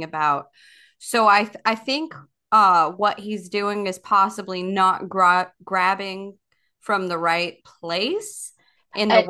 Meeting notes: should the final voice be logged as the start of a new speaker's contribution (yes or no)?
yes